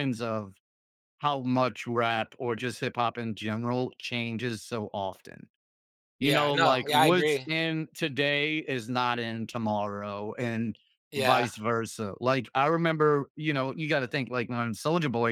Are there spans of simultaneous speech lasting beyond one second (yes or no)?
yes